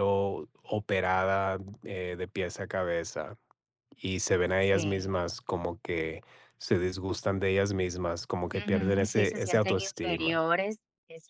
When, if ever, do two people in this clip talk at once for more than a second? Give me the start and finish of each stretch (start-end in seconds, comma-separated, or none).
8.5-10.4